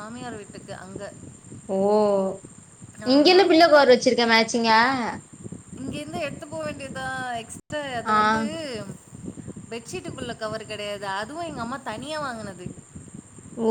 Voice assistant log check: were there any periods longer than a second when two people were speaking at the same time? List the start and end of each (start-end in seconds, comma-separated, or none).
none